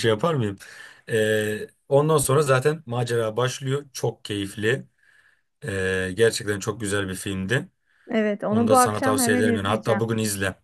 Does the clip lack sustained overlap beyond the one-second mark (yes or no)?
no